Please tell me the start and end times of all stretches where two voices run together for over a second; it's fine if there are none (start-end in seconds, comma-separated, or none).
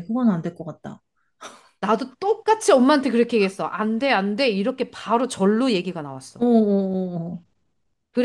none